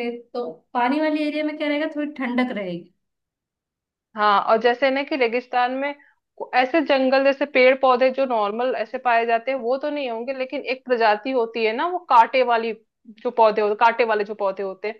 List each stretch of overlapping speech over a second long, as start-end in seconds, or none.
none